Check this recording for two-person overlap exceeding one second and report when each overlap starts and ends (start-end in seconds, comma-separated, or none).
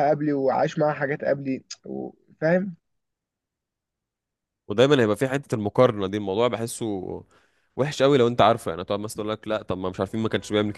none